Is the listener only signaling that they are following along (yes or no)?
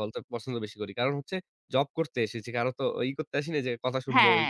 no